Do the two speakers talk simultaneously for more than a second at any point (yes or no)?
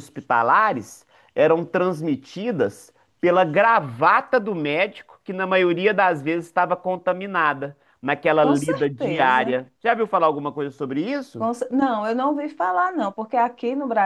yes